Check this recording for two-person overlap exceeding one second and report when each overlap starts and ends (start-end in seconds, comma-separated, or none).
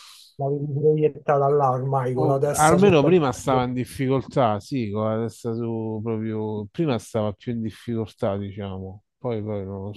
2.2-3.7